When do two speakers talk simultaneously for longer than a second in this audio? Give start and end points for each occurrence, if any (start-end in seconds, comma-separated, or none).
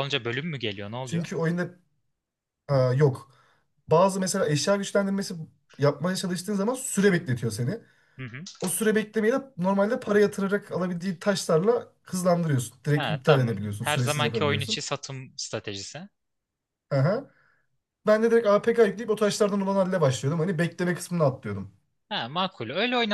12.9-14.8